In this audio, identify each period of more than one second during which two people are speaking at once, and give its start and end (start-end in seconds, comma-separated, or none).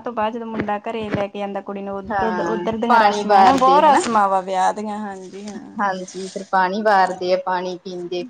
2.1-4.0